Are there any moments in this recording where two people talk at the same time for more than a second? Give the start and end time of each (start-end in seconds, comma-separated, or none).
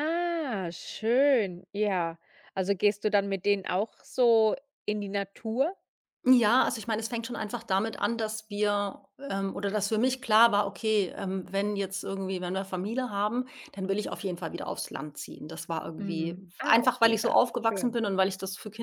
16.0-18.0